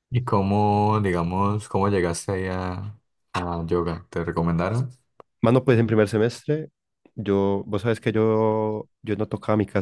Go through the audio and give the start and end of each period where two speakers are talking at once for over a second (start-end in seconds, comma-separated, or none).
none